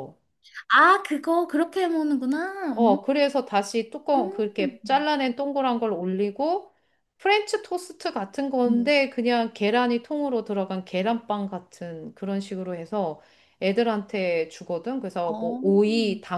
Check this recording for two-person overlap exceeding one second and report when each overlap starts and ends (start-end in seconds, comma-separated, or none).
none